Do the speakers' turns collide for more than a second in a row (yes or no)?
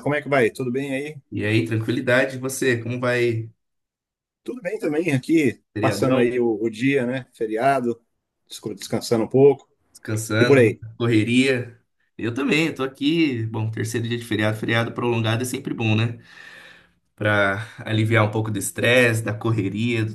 no